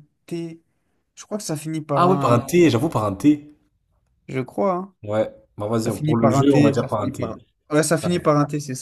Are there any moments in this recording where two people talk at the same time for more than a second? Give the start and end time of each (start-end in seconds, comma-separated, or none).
5.8-7.4